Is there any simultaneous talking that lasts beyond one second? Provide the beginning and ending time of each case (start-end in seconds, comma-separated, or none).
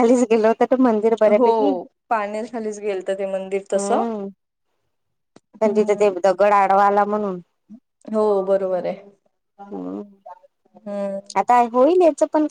none